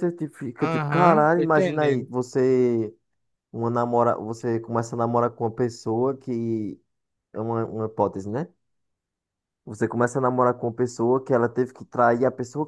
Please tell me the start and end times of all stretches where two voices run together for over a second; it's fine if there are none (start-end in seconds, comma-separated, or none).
0.6-2.1